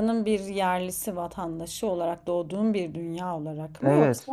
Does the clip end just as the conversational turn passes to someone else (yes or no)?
yes